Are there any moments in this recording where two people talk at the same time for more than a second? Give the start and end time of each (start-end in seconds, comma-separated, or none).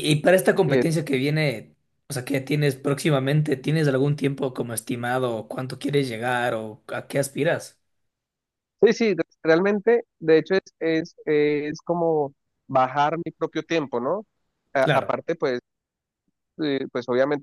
none